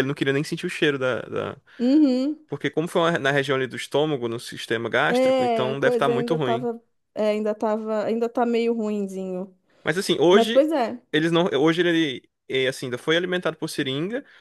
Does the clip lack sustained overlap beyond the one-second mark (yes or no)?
no